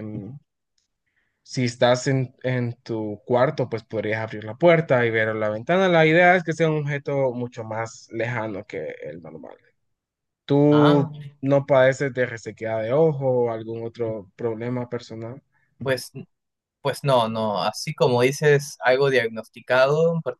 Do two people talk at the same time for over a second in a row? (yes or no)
no